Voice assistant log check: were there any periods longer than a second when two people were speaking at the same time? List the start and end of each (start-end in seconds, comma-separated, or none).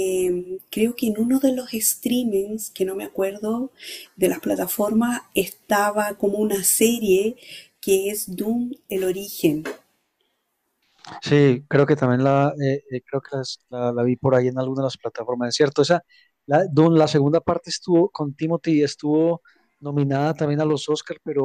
none